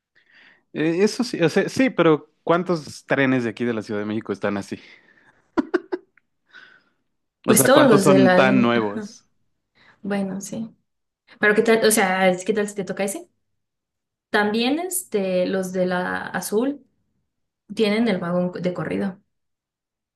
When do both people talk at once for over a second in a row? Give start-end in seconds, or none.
7.5-9.1